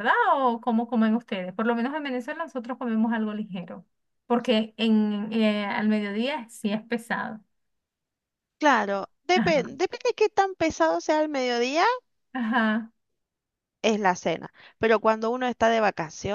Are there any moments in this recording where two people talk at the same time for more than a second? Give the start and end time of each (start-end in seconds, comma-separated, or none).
none